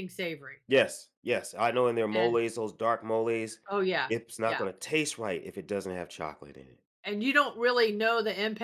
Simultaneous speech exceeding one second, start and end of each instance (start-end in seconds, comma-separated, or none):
none